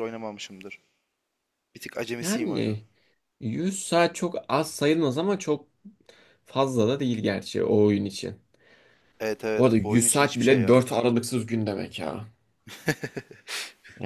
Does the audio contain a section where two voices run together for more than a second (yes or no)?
yes